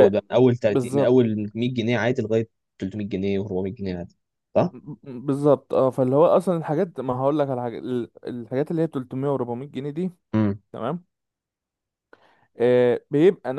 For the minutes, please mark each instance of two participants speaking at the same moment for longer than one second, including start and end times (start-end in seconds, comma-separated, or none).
none